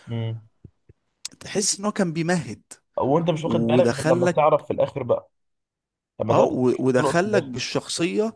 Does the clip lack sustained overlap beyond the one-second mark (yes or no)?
no